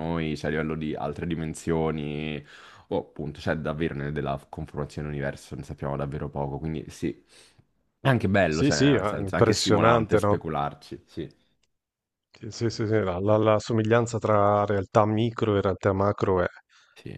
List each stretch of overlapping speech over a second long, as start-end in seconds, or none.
8.5-10.4